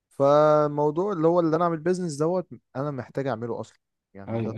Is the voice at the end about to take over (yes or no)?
yes